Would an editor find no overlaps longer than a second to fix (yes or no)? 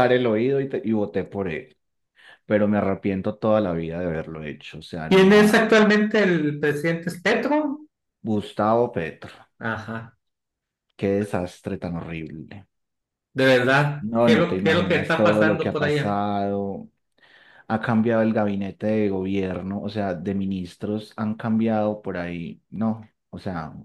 no